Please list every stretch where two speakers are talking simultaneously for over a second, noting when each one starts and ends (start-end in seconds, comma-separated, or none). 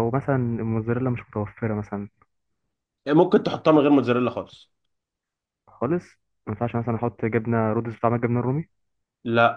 none